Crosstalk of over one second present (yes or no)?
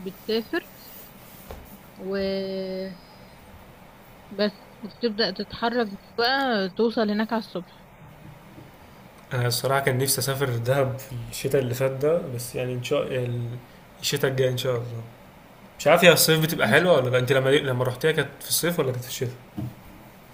no